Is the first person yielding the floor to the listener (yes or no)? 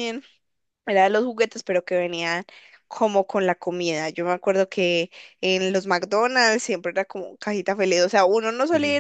no